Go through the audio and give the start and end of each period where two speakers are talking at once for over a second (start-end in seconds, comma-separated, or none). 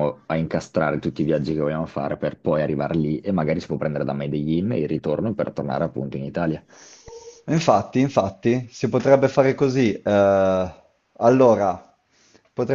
none